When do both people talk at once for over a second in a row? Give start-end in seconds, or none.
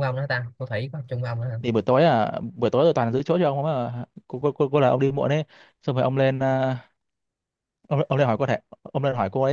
none